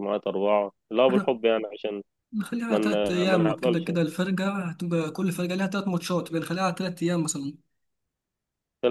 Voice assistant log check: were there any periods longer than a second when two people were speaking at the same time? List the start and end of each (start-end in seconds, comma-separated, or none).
2.7-3.9